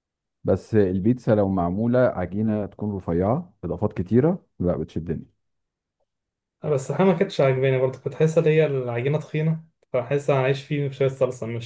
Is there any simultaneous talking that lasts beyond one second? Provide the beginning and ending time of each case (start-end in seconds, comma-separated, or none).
none